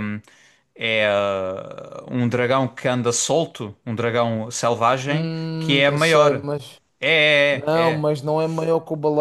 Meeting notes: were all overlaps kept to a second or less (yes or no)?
no